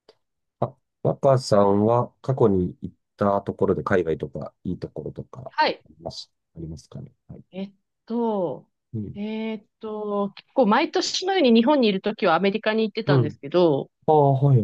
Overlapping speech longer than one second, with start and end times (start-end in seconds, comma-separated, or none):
none